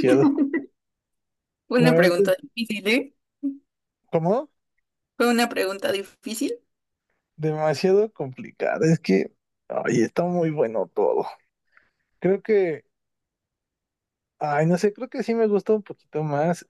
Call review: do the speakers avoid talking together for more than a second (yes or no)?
yes